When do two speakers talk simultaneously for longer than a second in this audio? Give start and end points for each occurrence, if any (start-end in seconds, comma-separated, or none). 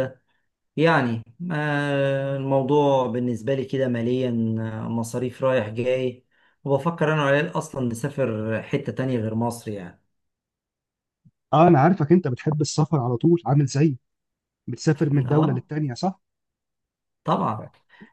none